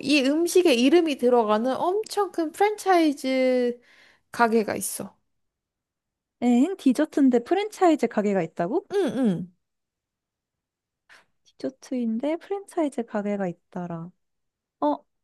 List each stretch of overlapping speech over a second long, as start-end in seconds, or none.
none